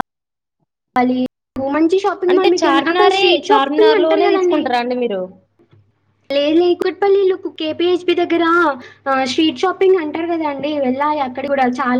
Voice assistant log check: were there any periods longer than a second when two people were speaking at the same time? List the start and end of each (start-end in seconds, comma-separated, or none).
2.3-4.6